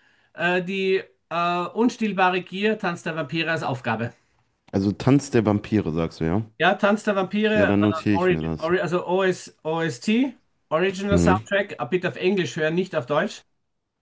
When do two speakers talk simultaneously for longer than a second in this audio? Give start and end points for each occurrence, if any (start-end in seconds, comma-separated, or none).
7.5-8.7